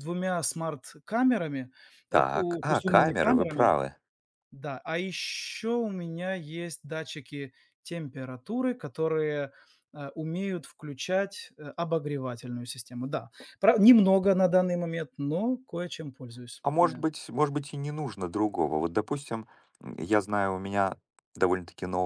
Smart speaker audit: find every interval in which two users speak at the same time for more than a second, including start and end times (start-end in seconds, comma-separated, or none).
2.1-3.7